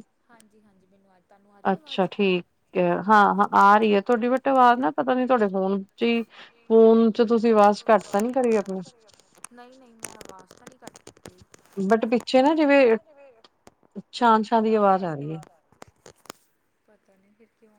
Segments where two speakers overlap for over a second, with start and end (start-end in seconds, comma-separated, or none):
none